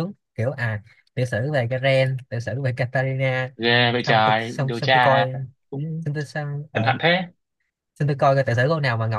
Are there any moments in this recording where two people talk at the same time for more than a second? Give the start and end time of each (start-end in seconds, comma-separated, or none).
4.0-5.2